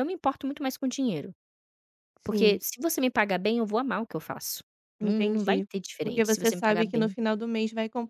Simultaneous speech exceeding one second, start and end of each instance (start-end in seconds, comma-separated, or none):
5.0-7.1